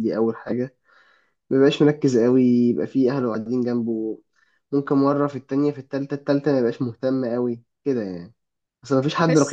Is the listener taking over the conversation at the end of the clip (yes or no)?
yes